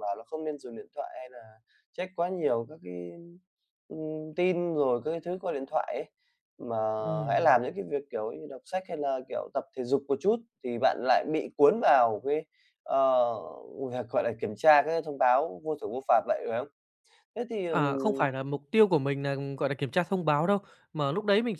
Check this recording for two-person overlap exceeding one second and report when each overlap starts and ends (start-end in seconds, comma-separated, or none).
none